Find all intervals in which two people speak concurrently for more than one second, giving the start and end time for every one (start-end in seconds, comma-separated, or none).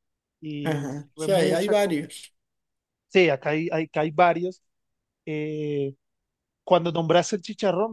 0.6-2.1